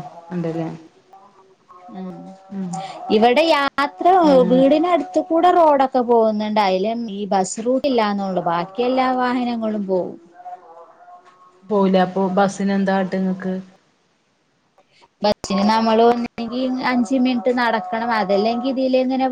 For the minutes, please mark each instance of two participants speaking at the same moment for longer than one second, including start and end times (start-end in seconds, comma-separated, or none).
none